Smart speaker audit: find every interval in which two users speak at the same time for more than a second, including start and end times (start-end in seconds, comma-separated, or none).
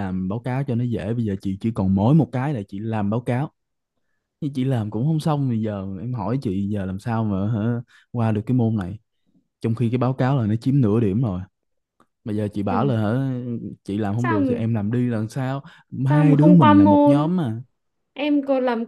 16.1-17.3